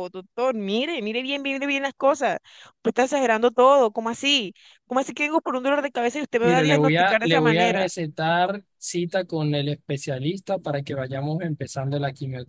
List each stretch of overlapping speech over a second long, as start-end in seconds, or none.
6.4-7.9